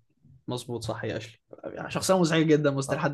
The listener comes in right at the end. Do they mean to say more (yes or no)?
yes